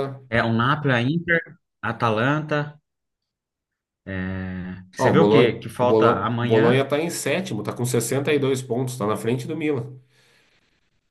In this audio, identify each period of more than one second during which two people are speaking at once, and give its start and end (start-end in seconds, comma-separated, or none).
5.0-6.7